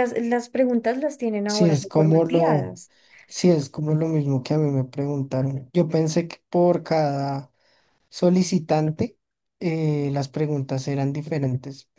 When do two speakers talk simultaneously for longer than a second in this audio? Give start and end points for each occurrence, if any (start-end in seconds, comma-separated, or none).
1.4-2.8